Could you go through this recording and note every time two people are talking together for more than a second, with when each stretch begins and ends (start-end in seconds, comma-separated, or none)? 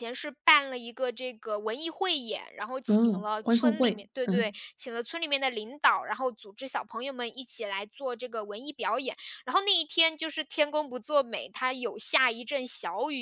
2.9-4.5